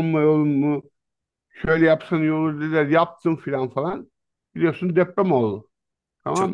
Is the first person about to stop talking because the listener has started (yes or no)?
yes